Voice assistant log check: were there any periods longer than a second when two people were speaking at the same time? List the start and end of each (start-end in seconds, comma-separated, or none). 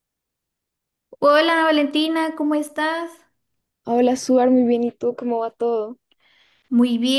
none